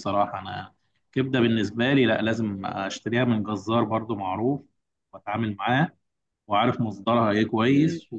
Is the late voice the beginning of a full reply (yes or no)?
no